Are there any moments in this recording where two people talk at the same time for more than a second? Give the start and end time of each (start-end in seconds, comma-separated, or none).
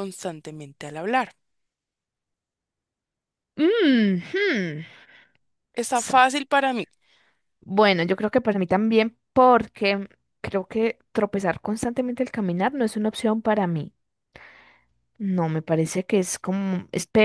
none